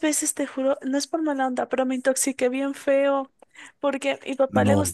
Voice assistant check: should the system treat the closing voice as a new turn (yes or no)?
no